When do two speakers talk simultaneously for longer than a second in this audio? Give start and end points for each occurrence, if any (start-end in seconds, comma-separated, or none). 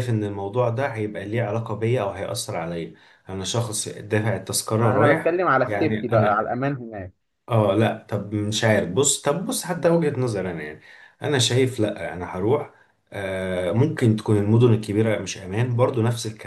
4.8-6.5